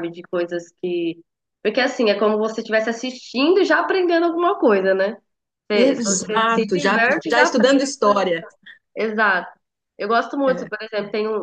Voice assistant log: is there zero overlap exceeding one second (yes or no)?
no